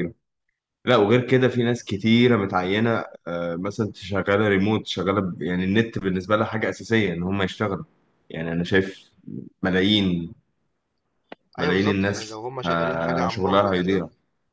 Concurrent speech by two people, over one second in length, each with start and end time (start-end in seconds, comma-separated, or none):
11.6-14.0